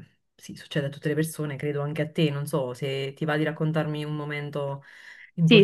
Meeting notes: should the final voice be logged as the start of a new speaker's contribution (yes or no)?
yes